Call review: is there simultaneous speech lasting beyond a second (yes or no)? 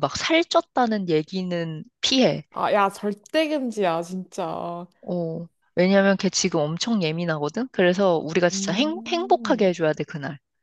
yes